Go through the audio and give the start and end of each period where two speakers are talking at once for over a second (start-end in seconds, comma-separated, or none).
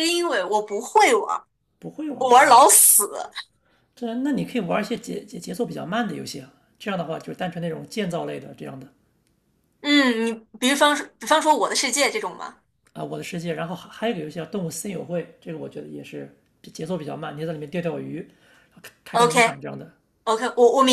none